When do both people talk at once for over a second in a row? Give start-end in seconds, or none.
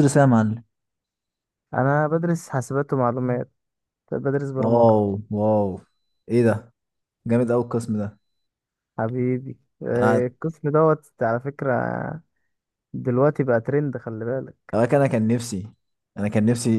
none